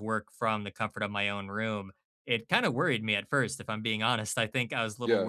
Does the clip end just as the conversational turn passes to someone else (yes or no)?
no